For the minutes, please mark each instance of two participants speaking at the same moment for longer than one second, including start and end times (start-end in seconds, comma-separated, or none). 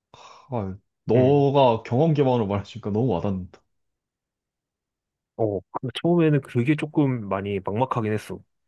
none